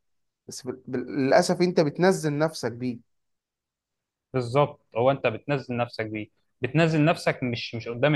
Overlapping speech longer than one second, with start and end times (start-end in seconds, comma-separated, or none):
none